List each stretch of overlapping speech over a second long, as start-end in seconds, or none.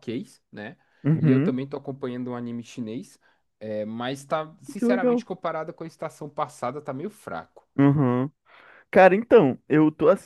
none